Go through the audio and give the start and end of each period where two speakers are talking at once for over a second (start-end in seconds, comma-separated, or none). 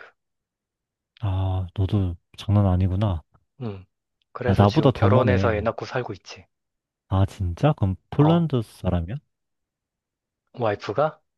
4.5-5.7